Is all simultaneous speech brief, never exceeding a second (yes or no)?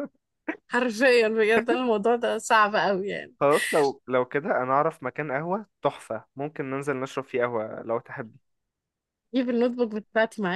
yes